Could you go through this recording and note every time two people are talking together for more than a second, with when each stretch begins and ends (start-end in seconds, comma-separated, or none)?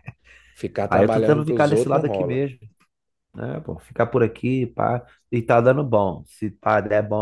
0.8-2.5